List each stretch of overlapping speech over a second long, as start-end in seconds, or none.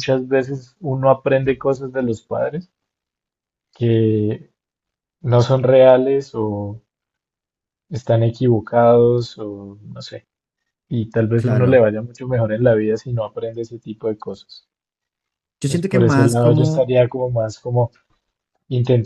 15.6-16.9